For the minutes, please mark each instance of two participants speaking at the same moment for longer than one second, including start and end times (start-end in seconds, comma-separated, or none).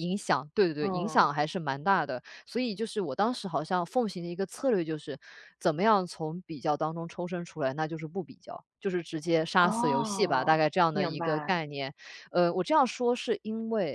9.6-11.6